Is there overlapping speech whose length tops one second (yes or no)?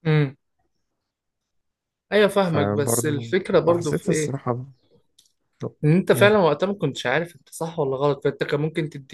yes